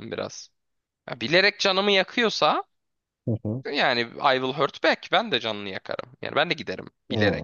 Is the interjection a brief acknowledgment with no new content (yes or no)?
no